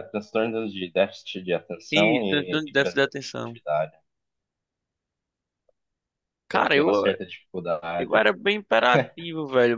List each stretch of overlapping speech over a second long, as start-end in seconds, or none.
1.9-3.6